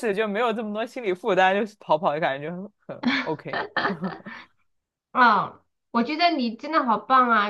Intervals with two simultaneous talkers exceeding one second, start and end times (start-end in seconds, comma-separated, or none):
none